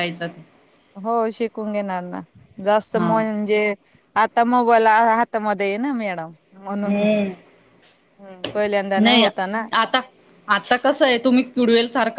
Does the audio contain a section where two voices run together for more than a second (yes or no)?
no